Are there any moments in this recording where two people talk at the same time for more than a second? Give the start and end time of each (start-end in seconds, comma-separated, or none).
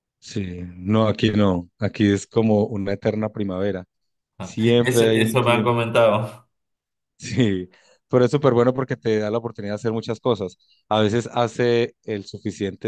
4.4-5.7